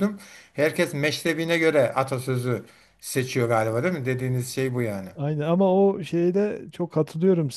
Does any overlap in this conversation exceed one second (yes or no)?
no